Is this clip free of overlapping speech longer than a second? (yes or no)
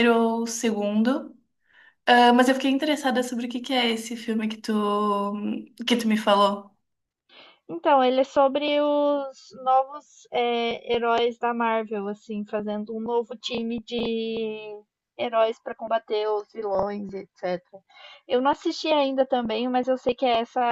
yes